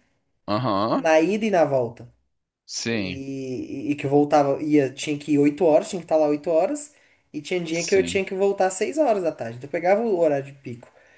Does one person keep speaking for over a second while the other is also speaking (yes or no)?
no